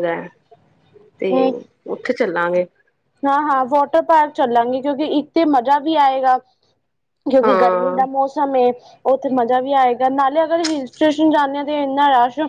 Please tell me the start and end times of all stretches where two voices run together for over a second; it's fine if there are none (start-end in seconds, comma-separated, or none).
none